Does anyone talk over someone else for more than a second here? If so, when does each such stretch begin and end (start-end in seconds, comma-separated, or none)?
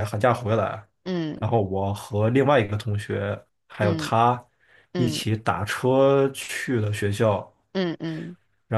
none